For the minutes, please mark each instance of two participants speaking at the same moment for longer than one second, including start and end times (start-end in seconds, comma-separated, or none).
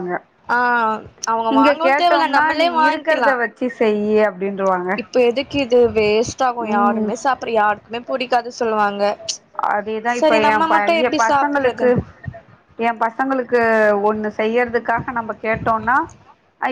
1.6-3.3